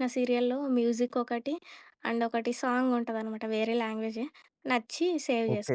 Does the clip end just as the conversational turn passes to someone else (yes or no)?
yes